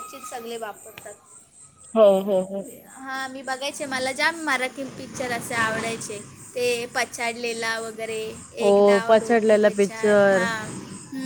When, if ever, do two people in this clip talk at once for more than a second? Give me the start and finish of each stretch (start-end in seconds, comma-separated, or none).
8.7-10.4